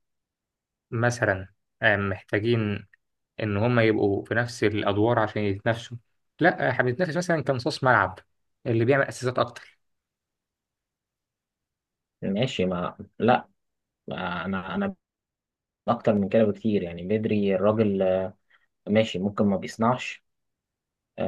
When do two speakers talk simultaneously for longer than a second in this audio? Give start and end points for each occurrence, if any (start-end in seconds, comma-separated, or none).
none